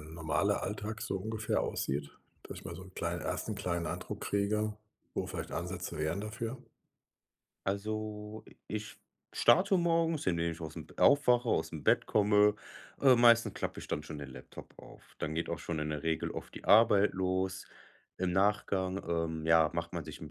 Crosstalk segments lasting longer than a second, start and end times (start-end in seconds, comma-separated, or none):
none